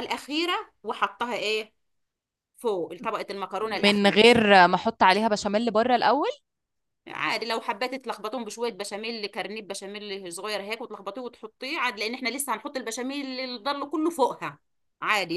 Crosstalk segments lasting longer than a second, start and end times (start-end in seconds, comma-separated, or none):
none